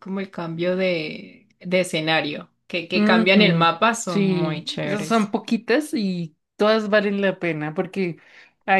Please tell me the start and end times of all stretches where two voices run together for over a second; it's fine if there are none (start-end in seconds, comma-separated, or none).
2.9-5.3